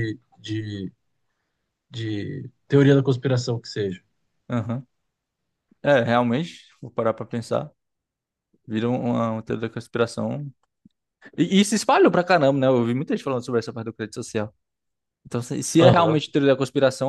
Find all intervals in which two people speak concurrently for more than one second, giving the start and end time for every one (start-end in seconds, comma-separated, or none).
none